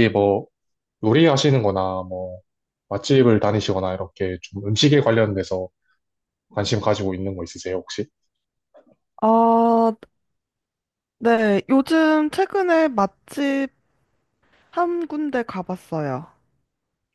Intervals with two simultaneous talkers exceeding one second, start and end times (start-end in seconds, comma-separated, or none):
none